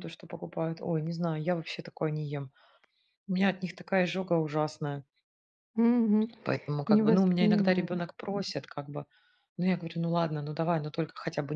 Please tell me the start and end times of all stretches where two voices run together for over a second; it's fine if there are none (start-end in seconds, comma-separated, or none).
6.9-8.1